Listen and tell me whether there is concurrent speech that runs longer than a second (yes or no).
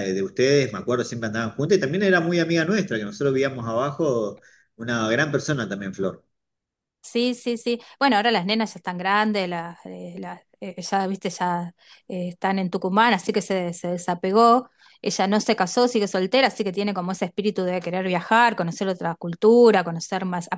no